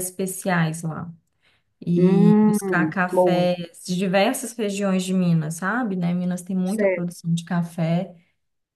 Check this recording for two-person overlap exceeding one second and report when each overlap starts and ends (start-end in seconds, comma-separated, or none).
1.9-3.5